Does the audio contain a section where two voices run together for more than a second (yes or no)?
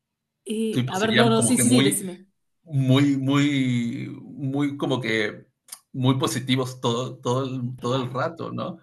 yes